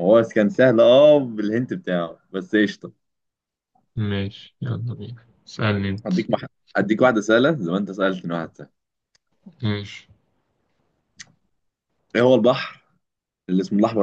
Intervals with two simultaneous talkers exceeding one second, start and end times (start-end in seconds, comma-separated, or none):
none